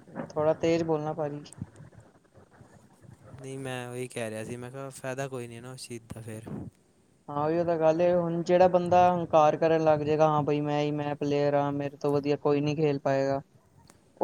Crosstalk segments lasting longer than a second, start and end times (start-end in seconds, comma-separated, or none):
none